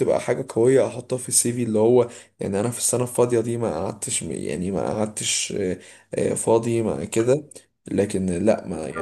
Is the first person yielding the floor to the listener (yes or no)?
no